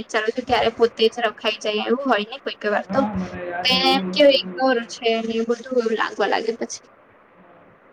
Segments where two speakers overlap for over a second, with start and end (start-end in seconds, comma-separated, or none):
3.8-5.7